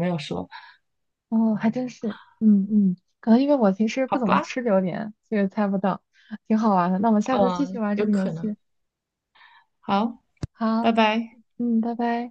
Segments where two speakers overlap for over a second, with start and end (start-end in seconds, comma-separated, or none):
7.3-8.5